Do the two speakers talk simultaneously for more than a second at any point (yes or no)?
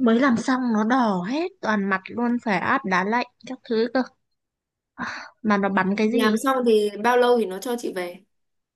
no